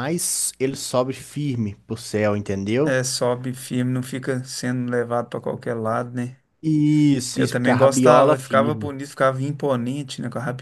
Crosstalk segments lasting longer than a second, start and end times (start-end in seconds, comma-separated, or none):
7.3-8.9